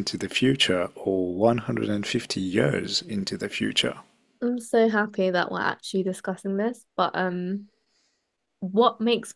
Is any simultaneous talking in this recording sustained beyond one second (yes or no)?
no